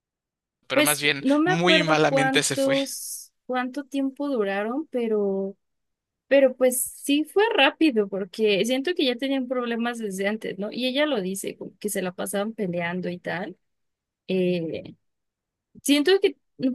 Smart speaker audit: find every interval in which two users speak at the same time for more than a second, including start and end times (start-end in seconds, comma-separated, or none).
0.7-2.8